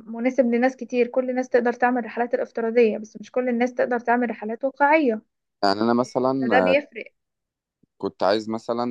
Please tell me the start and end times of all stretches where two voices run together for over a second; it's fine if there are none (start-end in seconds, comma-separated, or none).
none